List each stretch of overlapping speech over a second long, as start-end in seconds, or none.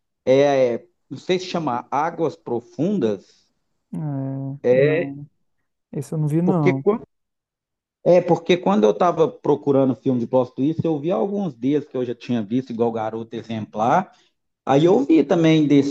none